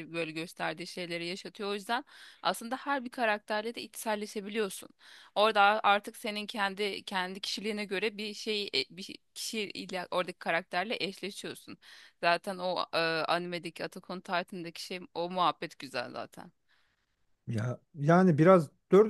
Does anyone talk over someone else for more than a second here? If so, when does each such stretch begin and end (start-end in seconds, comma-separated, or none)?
none